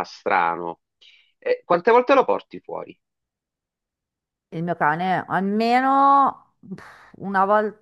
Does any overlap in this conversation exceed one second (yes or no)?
no